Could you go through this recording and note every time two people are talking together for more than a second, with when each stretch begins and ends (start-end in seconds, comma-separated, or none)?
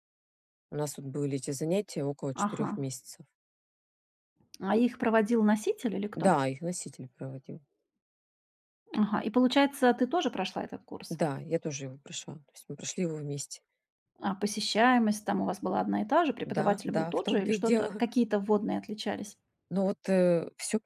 16.4-18.0